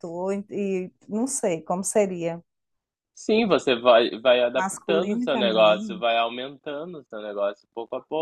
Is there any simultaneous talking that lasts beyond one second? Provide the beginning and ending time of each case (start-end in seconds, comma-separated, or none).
4.5-6.0